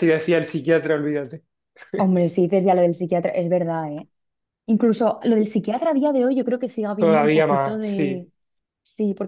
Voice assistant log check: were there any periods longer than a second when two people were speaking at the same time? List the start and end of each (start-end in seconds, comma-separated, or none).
7.0-8.3